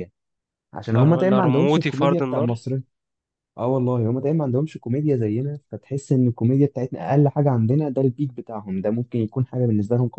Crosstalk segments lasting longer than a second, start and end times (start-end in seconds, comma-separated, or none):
0.9-2.6